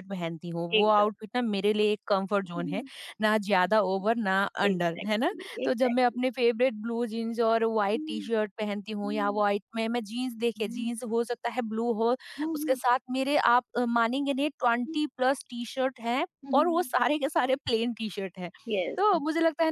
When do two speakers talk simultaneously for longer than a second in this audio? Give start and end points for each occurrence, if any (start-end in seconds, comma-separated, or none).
4.7-6.2